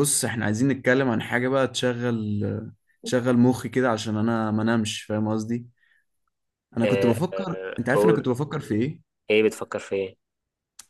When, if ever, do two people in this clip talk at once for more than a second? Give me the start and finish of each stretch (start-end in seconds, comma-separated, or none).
6.8-8.3